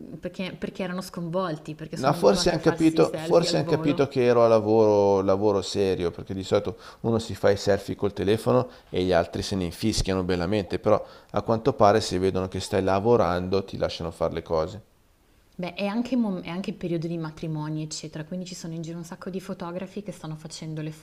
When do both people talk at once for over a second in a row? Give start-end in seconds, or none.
1.9-4.1